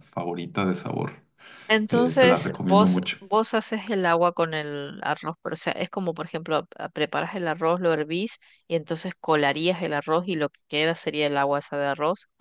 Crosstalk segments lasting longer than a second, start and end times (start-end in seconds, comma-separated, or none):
1.9-3.2